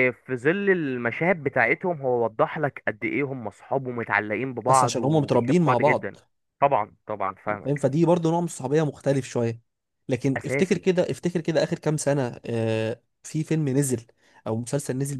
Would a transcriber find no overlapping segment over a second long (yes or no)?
no